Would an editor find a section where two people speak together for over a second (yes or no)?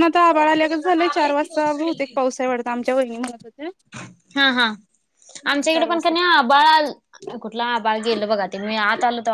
no